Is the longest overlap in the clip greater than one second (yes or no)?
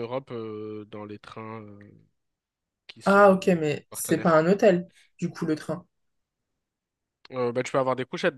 yes